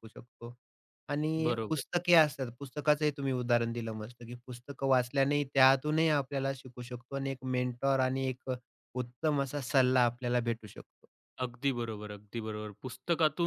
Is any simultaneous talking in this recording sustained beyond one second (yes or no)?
no